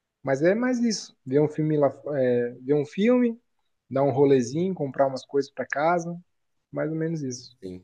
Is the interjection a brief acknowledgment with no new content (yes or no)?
no